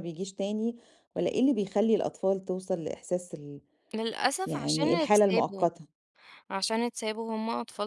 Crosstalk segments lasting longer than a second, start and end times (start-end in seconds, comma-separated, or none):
4.5-5.7